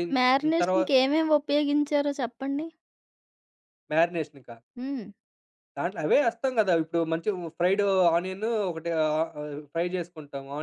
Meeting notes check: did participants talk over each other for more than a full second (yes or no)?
no